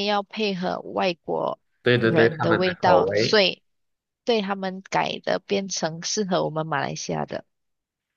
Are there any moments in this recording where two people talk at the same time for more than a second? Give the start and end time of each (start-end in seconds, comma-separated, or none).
2.0-3.4